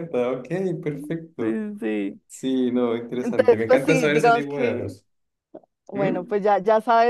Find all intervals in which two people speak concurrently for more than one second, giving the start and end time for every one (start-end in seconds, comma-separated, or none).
3.2-5.0